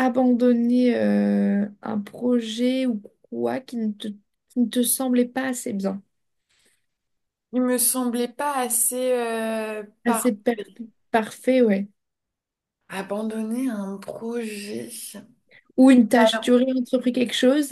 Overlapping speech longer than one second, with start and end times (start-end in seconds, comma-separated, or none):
none